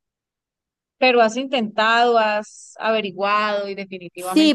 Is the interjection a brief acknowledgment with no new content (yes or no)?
no